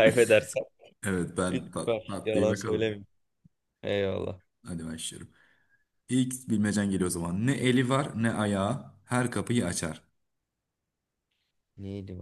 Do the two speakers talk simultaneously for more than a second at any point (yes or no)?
yes